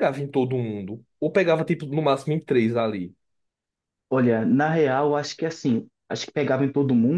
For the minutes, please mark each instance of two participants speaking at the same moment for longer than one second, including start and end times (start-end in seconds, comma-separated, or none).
none